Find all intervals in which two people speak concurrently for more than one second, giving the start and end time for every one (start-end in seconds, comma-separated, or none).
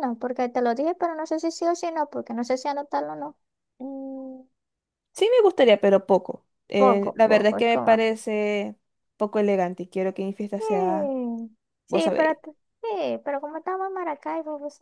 6.8-8.1